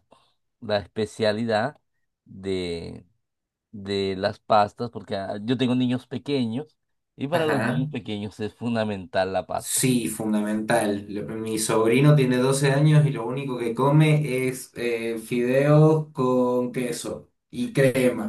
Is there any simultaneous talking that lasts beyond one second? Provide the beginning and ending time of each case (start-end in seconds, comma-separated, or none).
none